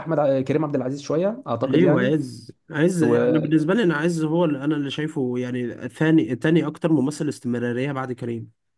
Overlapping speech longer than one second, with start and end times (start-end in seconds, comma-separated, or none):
none